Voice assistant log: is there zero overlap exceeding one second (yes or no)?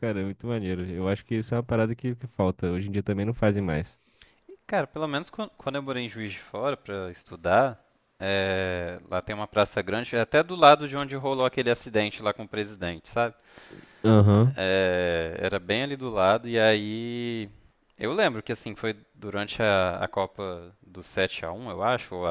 yes